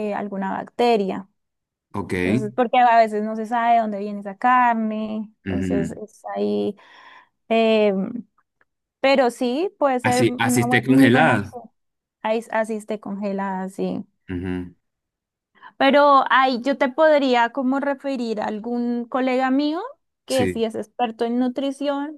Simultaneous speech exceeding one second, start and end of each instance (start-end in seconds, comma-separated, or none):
10.0-11.6